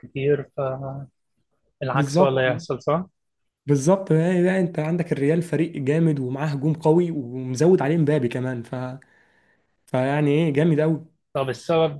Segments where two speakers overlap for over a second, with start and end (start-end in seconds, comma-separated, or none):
none